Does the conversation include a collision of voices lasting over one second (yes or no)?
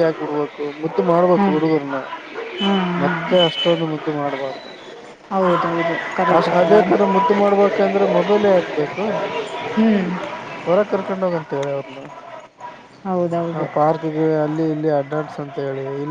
no